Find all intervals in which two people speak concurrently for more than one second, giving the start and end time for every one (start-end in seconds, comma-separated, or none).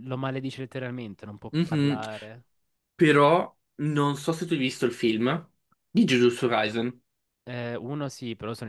none